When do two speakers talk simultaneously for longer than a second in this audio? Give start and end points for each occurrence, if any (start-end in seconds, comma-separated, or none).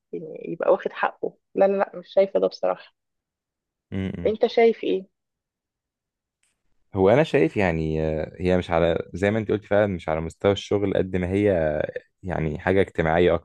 none